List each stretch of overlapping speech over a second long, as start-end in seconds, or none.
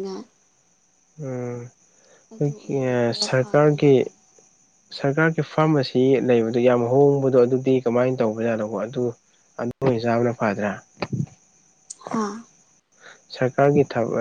2.4-3.9